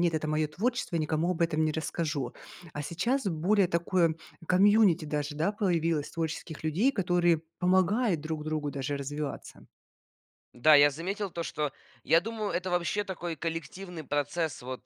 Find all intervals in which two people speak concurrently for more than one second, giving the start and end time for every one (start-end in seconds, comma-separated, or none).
none